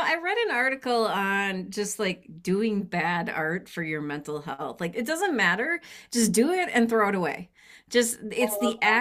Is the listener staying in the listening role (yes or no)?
yes